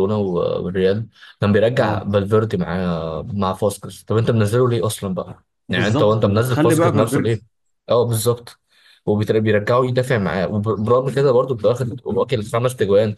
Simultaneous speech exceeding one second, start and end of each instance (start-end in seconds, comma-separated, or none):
5.7-7.4